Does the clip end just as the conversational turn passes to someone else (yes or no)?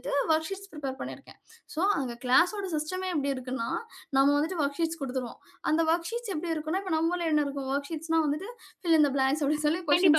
yes